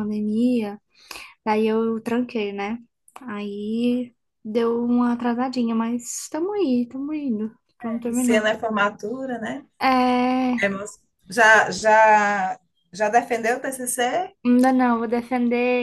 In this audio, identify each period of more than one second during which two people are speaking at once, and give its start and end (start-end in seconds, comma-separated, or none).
none